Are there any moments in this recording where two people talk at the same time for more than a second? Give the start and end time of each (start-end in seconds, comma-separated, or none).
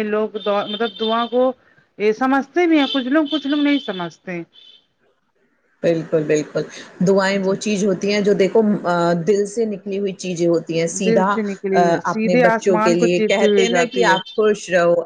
12.1-14.2